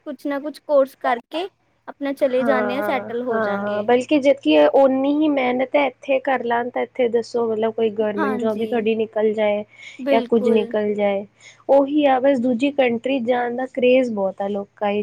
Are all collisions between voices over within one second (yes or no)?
no